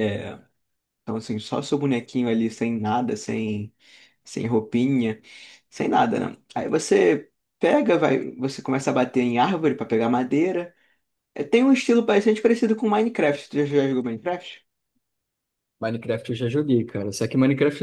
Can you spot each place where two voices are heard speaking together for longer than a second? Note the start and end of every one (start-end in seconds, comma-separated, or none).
none